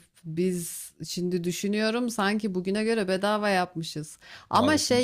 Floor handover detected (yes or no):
no